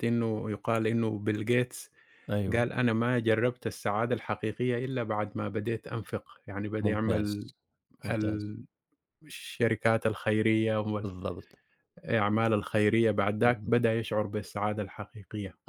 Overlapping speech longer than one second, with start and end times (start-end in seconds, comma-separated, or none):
none